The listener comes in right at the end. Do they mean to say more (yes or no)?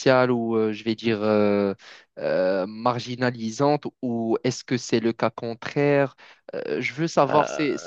yes